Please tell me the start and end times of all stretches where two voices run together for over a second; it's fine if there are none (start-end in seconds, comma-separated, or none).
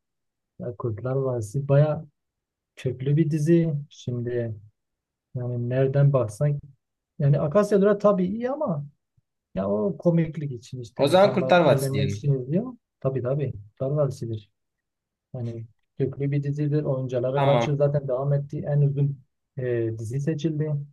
11.0-12.3